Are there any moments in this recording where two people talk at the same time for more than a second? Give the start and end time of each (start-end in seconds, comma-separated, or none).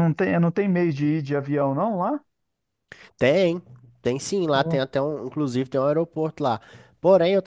none